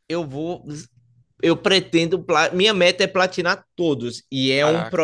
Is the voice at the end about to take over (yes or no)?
no